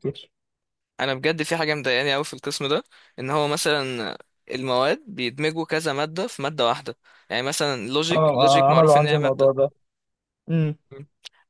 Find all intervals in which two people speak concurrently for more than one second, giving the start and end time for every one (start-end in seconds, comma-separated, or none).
8.1-9.5